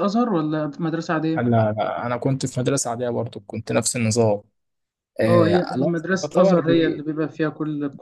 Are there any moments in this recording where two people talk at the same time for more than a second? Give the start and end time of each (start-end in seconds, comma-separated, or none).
5.3-7.0